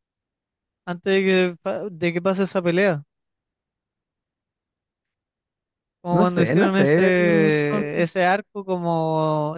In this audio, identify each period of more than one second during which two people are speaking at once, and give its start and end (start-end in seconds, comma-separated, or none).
6.1-8.1